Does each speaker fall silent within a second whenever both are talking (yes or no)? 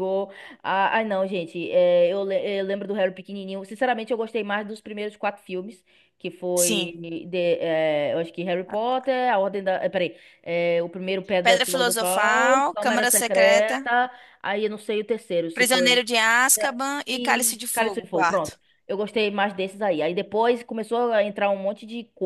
no